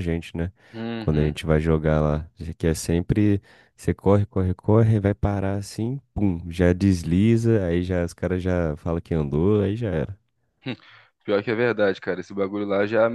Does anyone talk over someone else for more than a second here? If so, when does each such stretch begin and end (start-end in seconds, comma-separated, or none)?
none